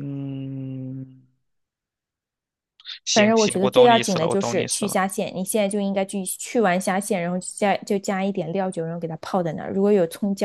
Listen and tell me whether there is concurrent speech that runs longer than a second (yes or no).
yes